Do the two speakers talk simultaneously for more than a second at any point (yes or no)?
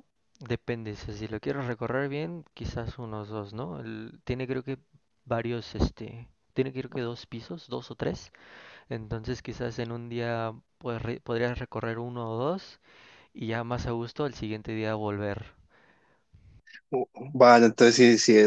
no